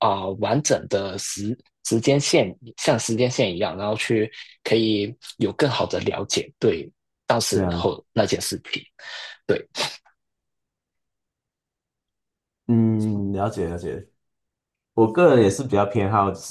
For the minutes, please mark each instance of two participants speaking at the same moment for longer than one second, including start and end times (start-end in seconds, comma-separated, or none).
none